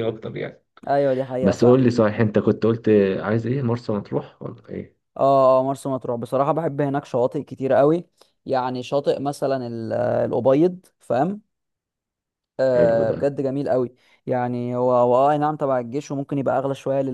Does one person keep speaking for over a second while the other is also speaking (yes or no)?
no